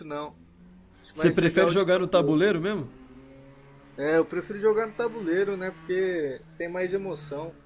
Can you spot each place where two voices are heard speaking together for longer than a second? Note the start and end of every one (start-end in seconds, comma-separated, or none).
1.1-2.4